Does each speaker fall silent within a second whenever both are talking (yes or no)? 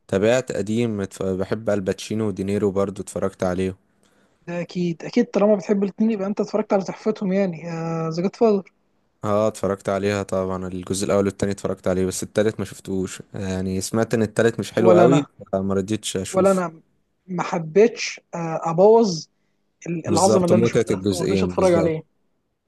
no